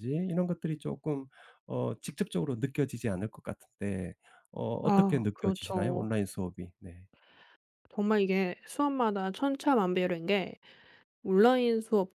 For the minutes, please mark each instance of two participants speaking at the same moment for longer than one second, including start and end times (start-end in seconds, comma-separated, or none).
4.8-6.1